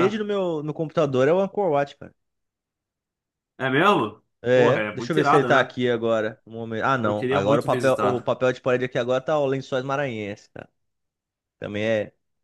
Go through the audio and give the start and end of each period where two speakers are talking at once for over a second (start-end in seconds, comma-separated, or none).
4.4-5.7, 7.0-8.3